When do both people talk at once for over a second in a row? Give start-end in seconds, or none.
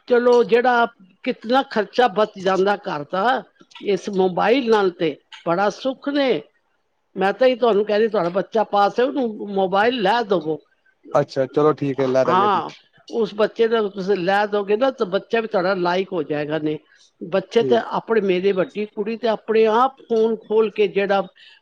none